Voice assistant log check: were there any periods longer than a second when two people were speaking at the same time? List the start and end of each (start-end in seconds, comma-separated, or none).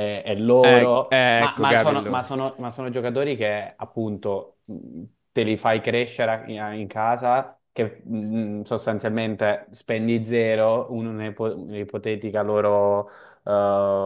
0.6-2.4